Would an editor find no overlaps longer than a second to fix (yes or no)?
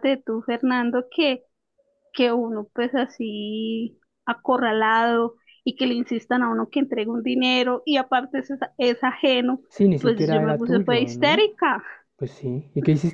no